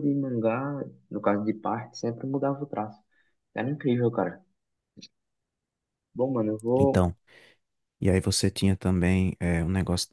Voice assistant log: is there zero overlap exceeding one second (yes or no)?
yes